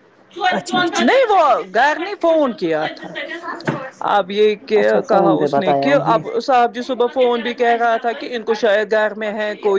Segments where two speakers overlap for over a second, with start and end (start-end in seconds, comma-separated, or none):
4.8-6.2